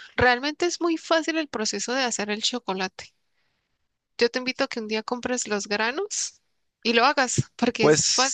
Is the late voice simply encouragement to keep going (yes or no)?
no